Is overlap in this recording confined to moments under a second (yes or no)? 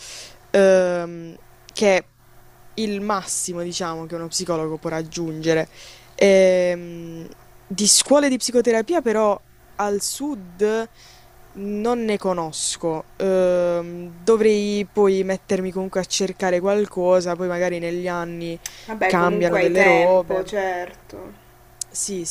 no